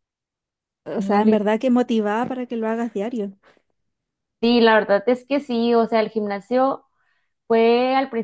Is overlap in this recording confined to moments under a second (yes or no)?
yes